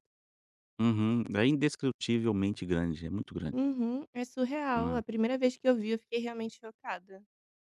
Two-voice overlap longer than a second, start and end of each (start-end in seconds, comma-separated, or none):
none